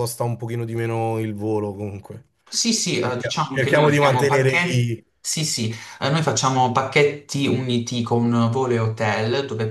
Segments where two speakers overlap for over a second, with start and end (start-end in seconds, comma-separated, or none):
3.0-5.0